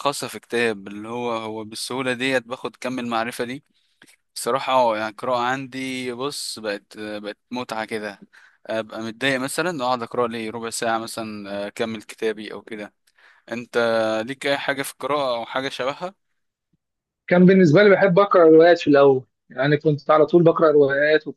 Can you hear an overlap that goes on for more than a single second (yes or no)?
no